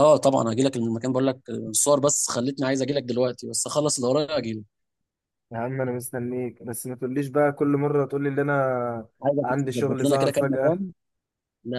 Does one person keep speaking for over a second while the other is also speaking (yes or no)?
yes